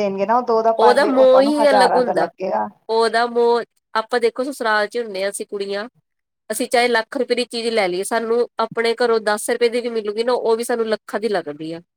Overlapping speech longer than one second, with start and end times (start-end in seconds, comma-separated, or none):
0.8-2.3